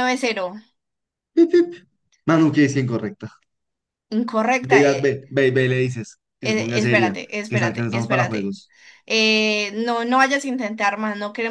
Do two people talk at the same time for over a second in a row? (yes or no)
yes